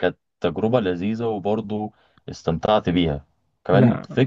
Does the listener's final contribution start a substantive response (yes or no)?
no